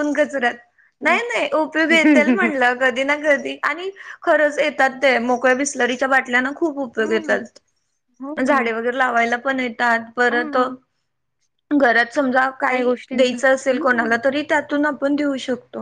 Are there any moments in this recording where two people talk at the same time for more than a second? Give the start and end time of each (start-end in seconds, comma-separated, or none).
12.8-14.2